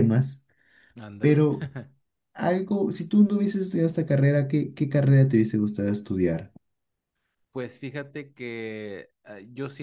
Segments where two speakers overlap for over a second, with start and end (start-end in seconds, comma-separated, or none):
none